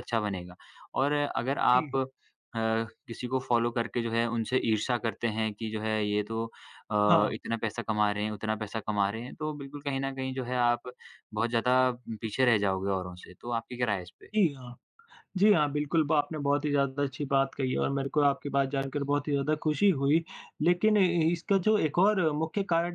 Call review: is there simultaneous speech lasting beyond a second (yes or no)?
no